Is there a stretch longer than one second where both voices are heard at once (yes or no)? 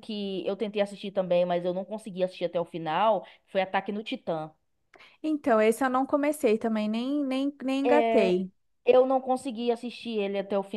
no